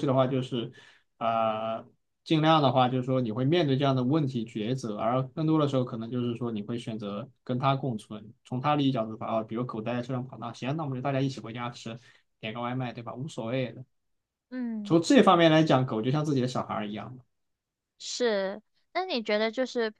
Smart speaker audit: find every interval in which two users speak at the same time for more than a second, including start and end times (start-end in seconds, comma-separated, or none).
none